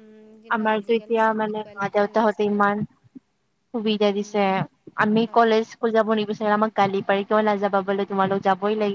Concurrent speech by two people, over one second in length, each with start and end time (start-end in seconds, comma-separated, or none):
0.5-2.7